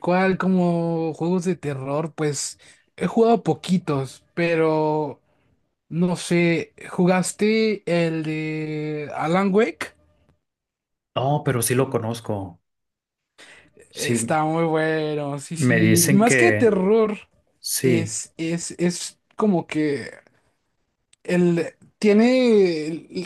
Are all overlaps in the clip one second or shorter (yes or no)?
no